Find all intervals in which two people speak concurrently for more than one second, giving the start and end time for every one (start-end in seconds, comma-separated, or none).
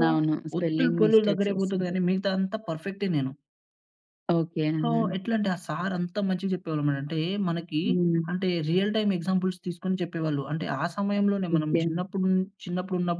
0.6-2.0